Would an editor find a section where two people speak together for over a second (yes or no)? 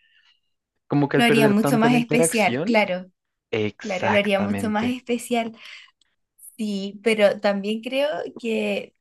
yes